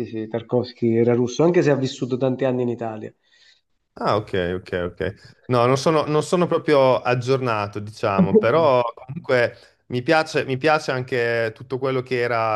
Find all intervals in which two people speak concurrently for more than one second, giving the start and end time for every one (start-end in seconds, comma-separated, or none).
none